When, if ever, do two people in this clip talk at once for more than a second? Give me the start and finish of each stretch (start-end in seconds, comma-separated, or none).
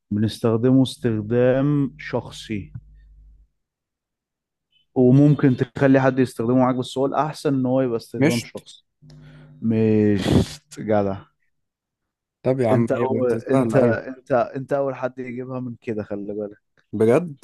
12.7-14.0